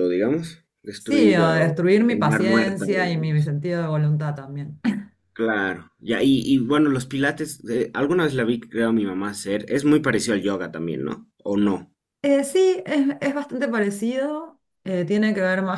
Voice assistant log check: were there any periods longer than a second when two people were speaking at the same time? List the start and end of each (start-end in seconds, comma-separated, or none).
1.0-3.5